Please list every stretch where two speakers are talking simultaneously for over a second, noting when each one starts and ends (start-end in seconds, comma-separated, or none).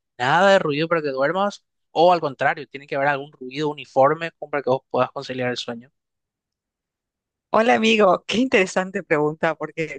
none